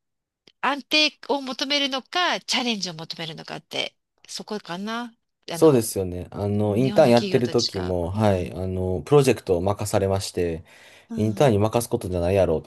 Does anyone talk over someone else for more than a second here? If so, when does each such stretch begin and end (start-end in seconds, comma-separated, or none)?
6.5-8.6